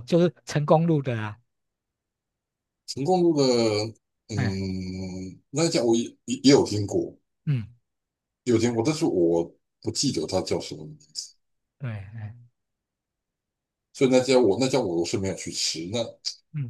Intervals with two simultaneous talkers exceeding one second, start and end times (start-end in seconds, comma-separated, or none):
none